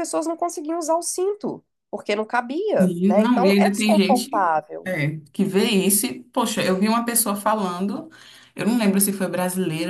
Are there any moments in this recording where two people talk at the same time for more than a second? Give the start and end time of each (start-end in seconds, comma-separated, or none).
2.8-4.9